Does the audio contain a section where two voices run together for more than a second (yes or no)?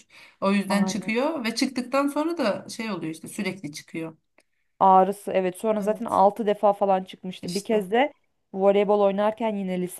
no